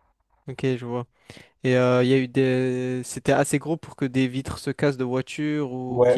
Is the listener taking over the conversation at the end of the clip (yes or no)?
yes